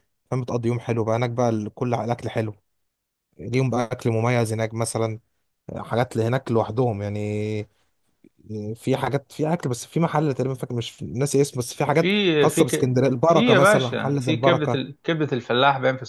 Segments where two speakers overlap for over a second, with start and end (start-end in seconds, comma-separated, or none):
11.9-14.8